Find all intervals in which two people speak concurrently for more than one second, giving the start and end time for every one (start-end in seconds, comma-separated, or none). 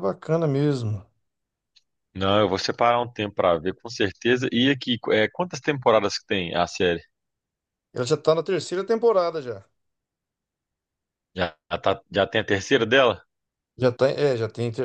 none